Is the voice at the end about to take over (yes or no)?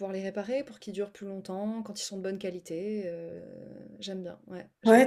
yes